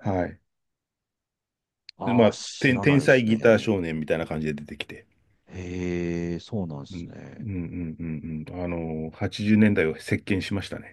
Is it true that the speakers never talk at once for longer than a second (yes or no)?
no